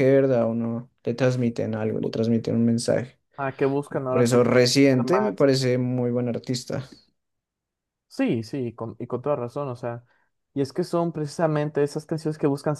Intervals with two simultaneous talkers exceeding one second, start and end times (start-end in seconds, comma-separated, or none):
3.9-5.3